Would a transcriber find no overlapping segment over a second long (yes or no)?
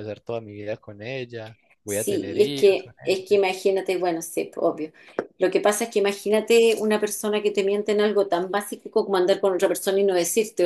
no